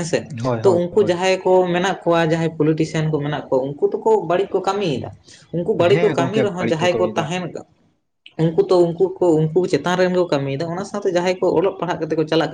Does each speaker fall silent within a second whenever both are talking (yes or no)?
no